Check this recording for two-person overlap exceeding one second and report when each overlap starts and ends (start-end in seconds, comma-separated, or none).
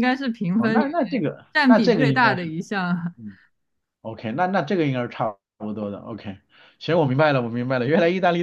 0.6-2.5